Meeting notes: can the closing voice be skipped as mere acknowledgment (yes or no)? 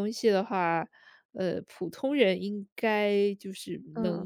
yes